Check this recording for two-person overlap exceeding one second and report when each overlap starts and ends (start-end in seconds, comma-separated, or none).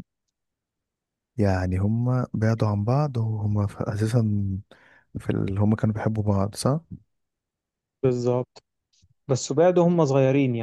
none